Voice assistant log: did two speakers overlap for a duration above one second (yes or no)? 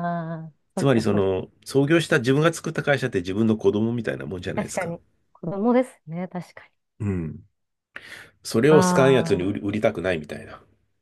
no